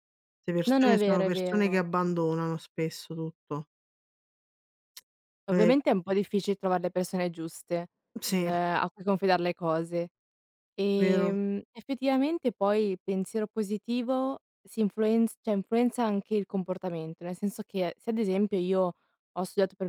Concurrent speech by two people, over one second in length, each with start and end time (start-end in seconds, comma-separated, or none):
0.7-2.0